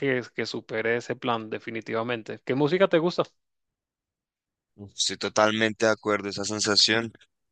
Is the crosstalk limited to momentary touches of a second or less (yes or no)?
yes